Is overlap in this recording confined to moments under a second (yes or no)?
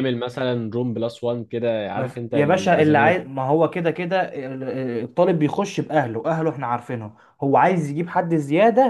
no